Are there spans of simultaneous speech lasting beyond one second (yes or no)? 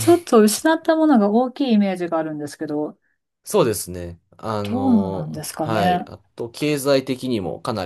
yes